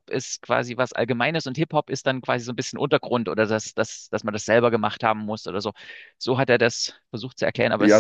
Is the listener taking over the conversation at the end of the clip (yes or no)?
yes